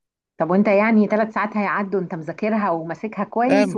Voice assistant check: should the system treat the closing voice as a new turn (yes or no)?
yes